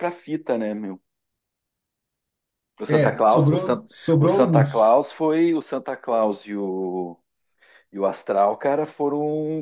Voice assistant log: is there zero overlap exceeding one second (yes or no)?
no